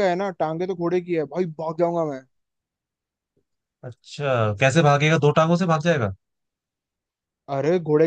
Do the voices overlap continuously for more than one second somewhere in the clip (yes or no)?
no